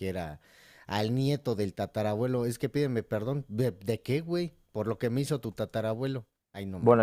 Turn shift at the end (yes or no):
yes